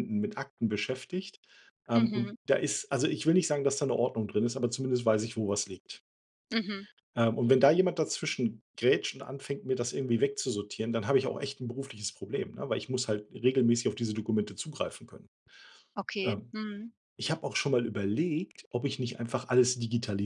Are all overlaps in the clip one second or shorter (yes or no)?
yes